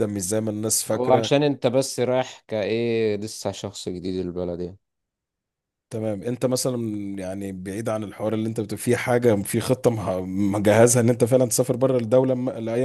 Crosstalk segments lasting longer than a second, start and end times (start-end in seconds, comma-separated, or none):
none